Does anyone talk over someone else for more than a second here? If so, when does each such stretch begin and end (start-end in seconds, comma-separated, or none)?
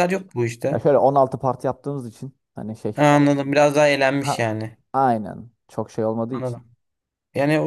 none